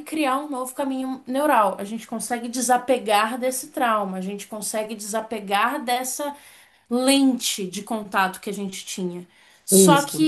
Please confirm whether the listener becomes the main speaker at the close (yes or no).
no